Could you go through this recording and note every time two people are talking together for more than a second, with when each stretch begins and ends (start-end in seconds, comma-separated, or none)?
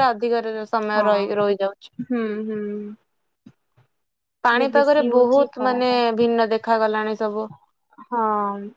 4.4-6.0